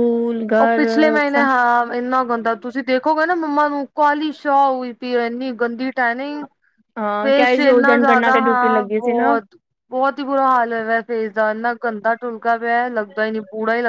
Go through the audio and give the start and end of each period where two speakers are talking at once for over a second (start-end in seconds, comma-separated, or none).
7.2-9.4